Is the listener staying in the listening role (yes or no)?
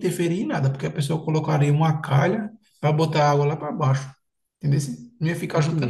no